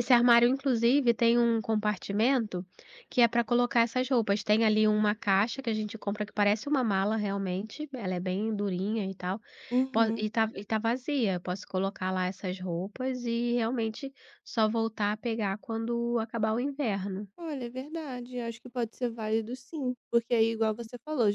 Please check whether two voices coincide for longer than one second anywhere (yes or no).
no